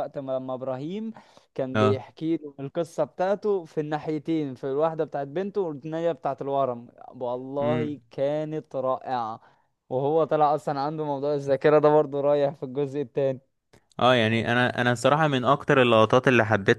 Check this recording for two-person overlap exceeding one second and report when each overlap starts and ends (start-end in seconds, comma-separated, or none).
none